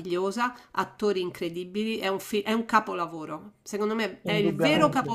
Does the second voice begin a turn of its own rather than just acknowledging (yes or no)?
no